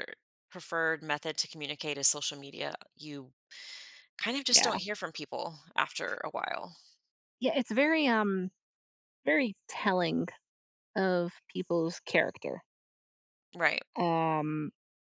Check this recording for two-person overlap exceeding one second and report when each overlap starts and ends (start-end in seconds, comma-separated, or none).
none